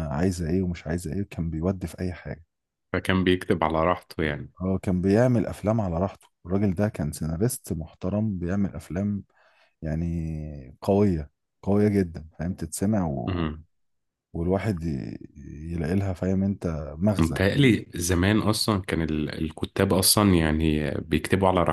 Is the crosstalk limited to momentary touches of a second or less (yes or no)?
yes